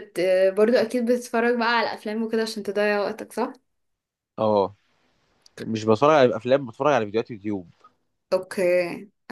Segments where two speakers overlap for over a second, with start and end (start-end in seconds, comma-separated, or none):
none